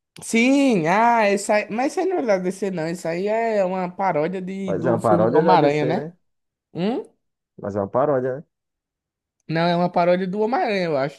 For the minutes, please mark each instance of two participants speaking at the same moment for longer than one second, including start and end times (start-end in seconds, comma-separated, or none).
4.7-6.1